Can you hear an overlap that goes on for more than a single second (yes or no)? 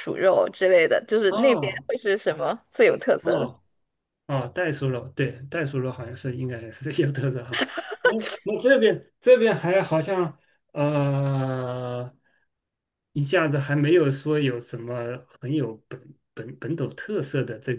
no